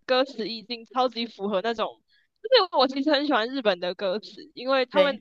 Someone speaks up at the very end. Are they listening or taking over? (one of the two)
listening